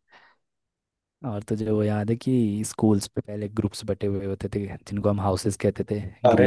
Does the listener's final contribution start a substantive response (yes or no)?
yes